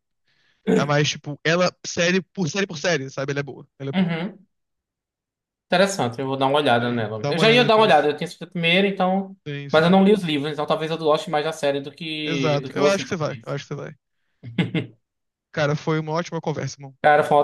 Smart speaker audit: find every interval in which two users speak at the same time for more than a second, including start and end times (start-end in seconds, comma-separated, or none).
6.8-8.1, 12.2-13.6